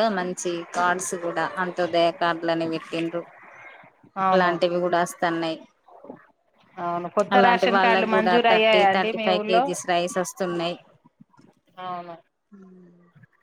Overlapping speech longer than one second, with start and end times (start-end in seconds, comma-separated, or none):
7.3-9.6